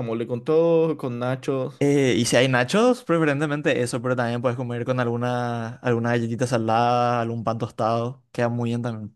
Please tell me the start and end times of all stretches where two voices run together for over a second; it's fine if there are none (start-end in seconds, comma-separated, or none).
none